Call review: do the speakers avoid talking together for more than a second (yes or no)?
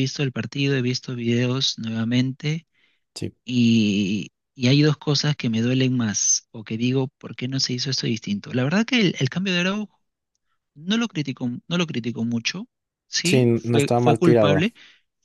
no